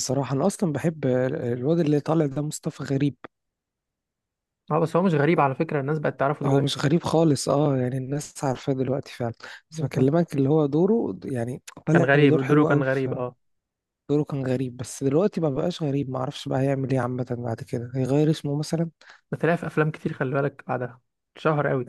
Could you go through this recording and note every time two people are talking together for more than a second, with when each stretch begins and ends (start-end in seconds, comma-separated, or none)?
11.9-13.2